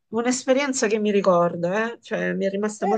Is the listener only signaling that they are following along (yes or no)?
no